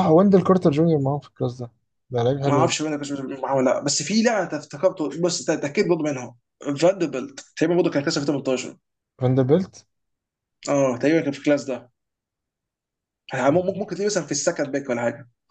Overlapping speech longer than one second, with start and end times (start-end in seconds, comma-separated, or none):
none